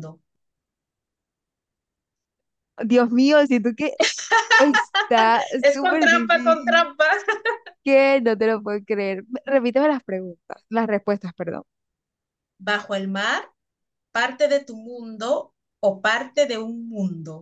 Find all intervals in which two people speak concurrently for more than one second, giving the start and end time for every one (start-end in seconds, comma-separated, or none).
5.6-6.9